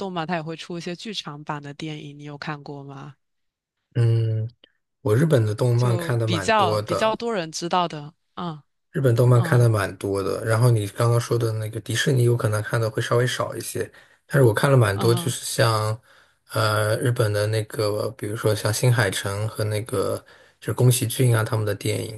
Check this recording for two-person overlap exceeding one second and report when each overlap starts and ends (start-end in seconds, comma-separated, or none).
5.7-7.2